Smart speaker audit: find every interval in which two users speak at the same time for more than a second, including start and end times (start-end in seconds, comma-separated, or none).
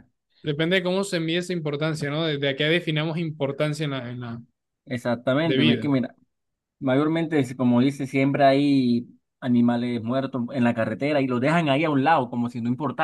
none